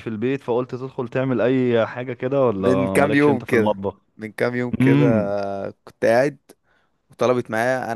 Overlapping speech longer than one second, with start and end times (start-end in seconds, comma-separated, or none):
2.6-3.8